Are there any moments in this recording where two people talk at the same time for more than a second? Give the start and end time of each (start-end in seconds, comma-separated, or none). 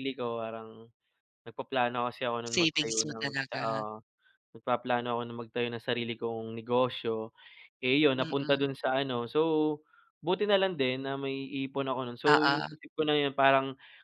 2.5-3.8